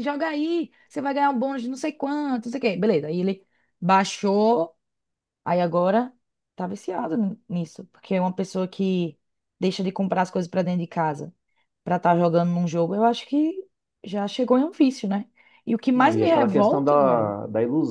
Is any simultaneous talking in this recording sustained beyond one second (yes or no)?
yes